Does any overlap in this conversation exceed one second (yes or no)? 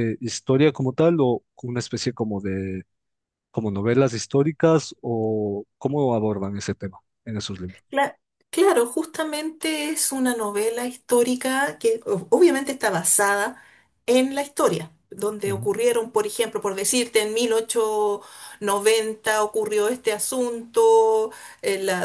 no